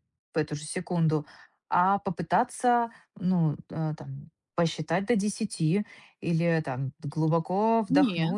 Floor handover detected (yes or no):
no